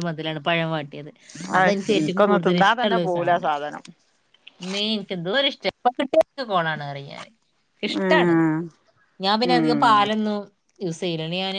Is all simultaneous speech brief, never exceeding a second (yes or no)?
no